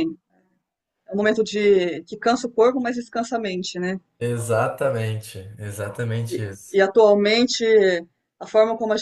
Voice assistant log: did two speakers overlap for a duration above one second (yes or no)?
no